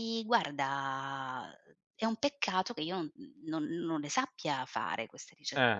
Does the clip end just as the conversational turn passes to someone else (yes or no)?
yes